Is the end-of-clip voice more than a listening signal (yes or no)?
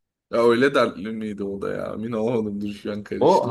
yes